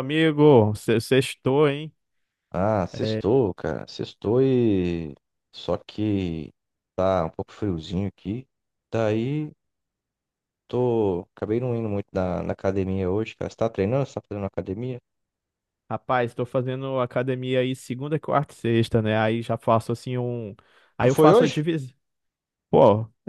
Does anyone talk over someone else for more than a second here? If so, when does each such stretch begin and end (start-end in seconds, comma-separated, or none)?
none